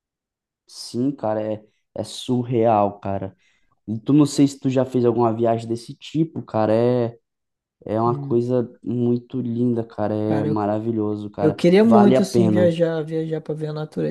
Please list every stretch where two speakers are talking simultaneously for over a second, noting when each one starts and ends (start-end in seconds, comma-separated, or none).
11.4-12.7